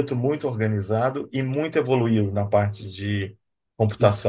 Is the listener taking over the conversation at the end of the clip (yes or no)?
yes